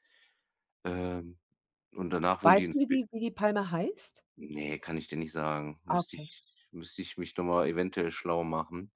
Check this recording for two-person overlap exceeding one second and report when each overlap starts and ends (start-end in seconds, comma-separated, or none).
none